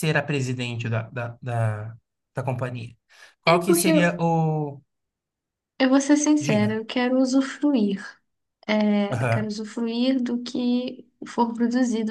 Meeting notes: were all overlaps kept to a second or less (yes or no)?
yes